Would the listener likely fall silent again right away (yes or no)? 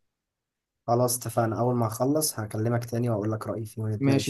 no